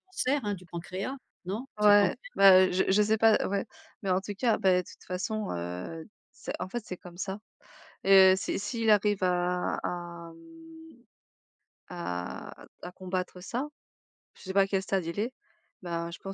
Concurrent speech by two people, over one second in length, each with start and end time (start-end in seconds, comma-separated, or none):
none